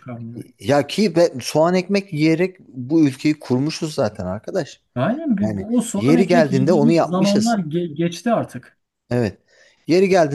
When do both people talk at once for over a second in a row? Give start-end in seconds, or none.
5.4-7.6